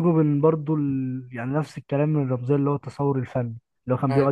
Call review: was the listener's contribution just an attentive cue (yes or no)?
yes